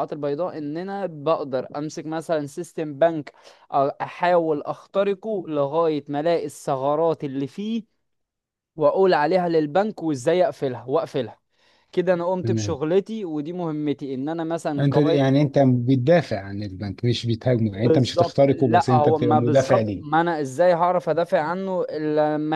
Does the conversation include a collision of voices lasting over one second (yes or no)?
yes